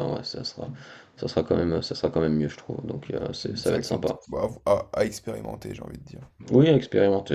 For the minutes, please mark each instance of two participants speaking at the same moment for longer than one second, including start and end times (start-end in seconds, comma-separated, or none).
none